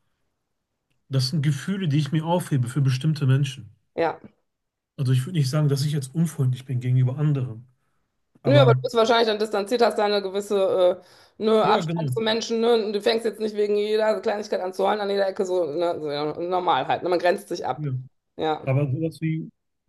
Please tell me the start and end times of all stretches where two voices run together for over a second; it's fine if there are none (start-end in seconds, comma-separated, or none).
none